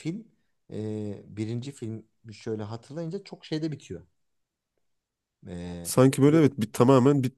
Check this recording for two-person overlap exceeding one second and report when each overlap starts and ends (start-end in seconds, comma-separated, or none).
none